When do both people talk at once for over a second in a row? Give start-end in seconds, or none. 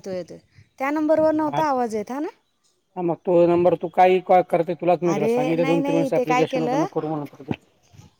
5.1-6.8